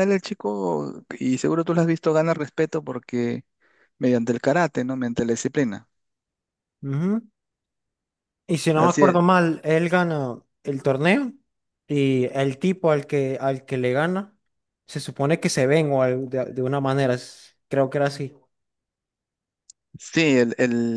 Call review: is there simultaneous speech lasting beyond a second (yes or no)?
no